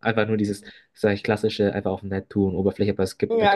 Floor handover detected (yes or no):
yes